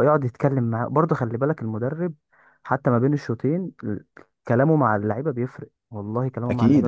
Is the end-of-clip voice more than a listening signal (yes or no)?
yes